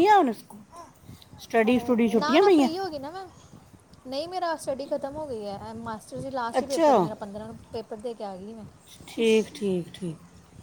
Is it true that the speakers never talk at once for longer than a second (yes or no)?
yes